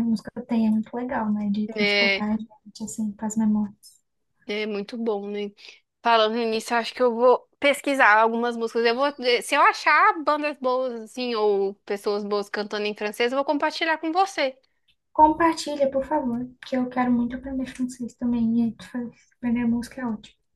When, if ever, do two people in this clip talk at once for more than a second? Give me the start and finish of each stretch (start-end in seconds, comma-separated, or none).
none